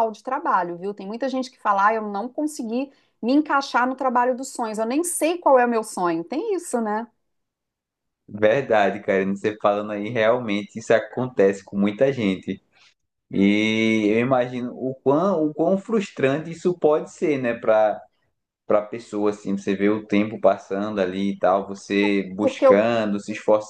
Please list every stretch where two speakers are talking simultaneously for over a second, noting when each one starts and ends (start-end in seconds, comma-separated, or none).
none